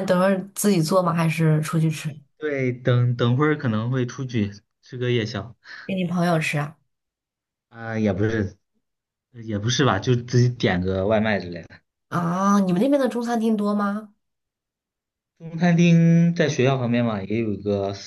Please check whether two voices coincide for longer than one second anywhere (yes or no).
no